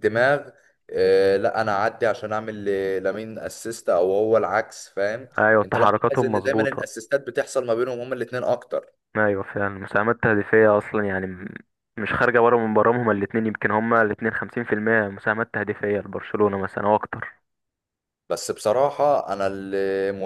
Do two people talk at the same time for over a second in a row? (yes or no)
yes